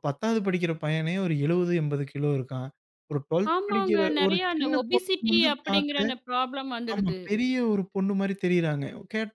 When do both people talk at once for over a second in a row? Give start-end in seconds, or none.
3.5-6.0